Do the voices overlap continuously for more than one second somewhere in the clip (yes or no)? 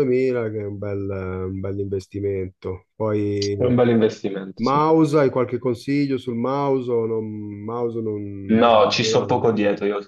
no